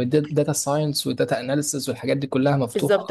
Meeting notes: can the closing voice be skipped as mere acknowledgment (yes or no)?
no